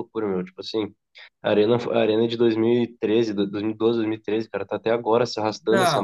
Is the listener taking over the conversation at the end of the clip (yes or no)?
yes